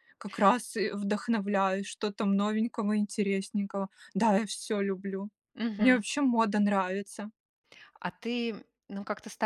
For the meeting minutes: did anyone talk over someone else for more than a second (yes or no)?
no